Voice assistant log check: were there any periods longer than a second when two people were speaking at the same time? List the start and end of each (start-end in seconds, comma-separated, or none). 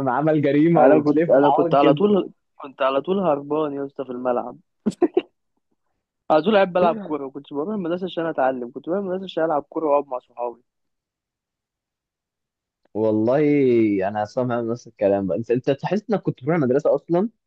0.8-2.1